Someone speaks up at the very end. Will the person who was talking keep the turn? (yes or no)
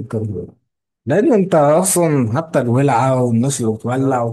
yes